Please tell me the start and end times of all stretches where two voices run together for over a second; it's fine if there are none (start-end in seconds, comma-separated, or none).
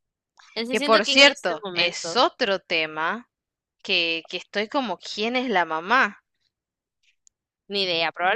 0.7-2.2